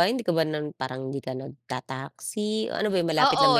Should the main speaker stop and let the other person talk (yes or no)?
yes